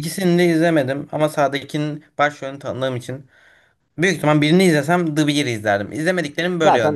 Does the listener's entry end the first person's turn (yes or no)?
yes